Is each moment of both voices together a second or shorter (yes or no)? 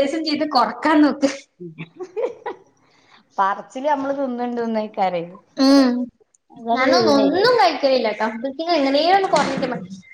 yes